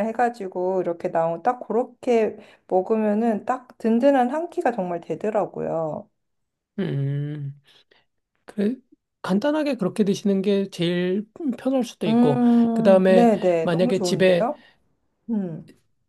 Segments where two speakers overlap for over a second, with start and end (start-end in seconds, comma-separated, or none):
12.1-14.5